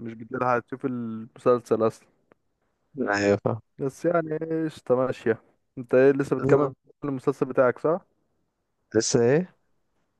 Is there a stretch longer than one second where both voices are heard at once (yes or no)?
no